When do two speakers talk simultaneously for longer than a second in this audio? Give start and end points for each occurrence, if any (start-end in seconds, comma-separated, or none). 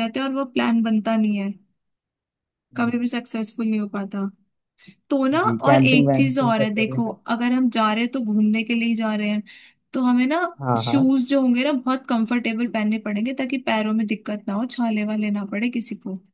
5.4-7.2